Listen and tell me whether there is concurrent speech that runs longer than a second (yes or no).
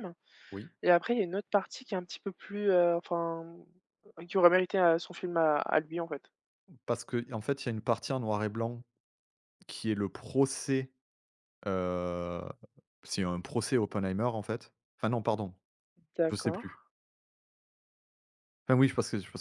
no